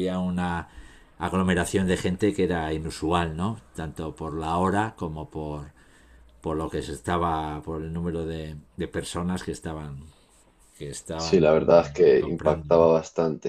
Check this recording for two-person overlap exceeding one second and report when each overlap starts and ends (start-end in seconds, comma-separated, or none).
11.2-12.9